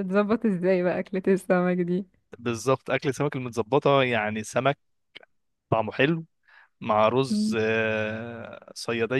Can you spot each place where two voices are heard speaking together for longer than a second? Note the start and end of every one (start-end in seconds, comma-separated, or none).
none